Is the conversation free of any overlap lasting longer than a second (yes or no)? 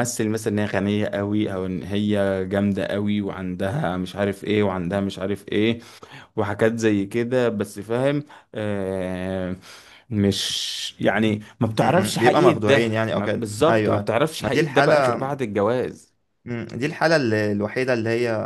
no